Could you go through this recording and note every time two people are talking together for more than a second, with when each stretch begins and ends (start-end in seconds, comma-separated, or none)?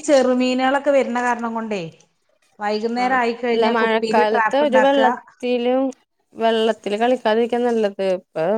3.0-5.0